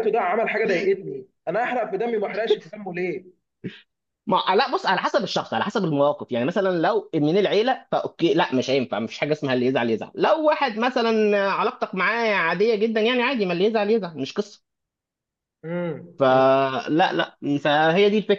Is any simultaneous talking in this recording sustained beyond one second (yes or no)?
no